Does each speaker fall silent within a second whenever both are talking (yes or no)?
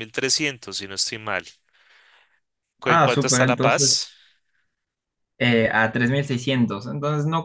no